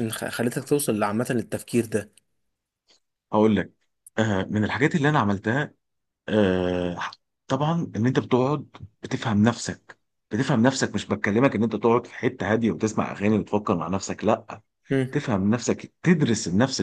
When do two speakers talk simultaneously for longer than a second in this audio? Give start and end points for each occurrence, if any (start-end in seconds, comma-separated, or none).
none